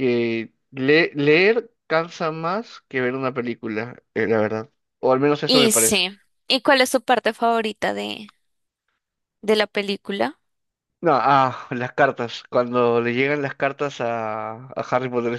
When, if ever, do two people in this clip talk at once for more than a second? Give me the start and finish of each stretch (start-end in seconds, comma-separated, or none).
none